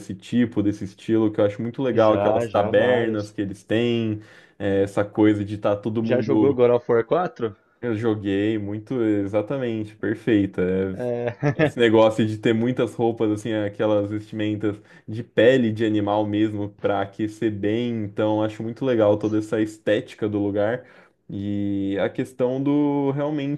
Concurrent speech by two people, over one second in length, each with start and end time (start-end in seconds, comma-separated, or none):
1.9-3.4